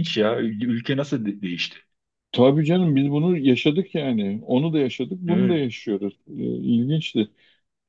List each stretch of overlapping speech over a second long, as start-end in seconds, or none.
none